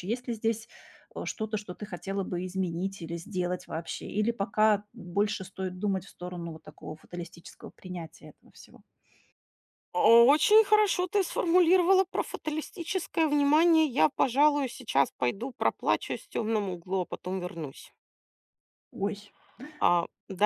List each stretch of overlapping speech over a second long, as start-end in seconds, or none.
none